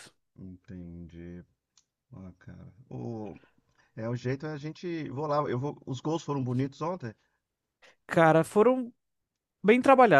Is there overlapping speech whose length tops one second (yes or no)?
no